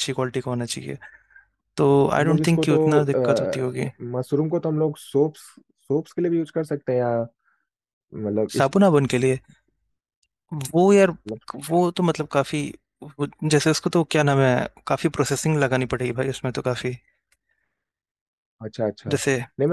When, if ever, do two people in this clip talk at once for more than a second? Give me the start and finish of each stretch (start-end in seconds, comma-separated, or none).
2.2-3.6